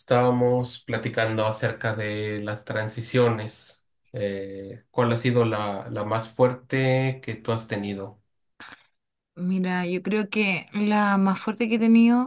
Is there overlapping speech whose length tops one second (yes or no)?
no